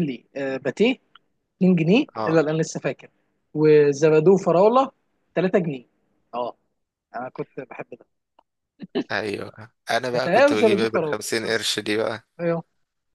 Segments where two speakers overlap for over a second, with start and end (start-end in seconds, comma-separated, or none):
10.1-11.7